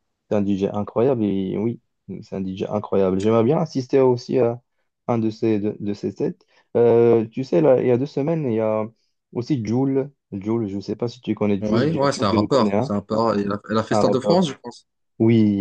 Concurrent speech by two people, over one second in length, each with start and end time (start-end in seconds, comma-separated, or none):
11.6-12.9